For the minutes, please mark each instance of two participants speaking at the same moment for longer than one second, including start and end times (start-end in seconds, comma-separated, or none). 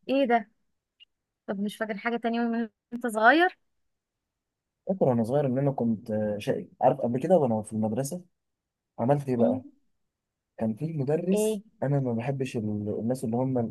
none